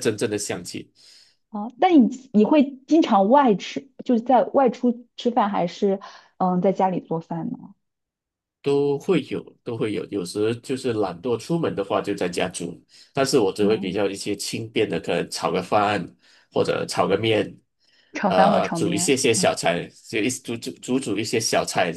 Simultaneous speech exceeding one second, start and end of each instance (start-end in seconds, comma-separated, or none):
18.2-19.6